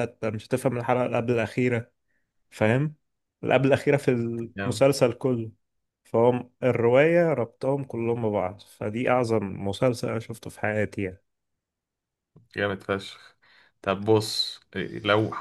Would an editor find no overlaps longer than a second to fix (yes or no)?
yes